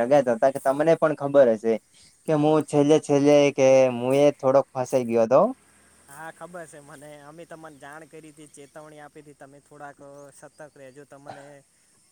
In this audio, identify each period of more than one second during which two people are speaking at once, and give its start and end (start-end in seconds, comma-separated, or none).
none